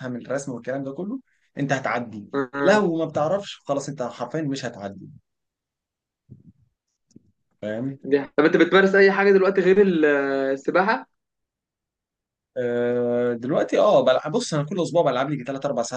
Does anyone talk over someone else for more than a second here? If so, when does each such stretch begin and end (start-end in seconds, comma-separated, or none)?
none